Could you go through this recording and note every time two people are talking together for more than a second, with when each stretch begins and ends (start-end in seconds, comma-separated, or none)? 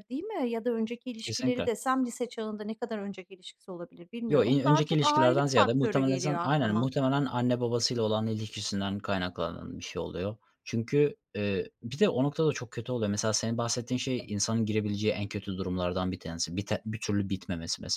4.3-6.9